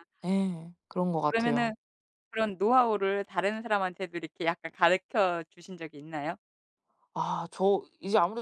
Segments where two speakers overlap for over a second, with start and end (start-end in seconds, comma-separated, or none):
none